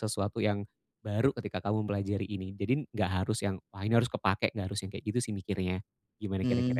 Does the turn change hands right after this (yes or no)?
yes